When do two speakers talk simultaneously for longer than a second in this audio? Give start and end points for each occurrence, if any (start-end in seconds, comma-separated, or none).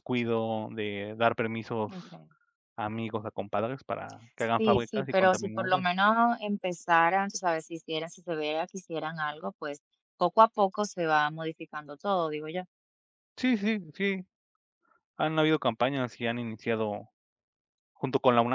4.6-5.8